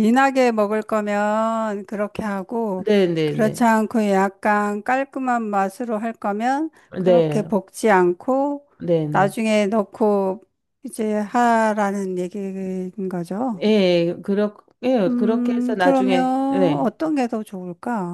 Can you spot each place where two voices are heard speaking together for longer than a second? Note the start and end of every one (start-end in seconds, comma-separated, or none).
15.1-16.9